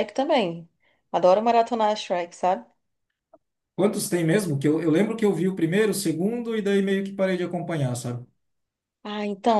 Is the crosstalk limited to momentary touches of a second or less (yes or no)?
yes